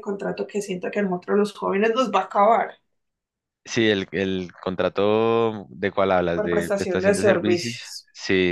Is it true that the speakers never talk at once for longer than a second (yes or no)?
no